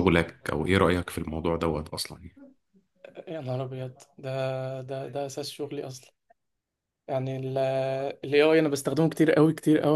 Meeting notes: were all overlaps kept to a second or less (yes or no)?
yes